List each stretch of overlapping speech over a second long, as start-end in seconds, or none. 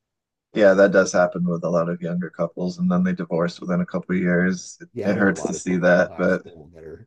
4.9-6.4